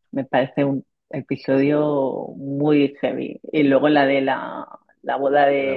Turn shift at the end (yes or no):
no